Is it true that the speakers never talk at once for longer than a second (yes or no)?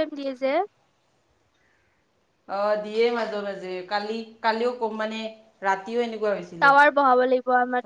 yes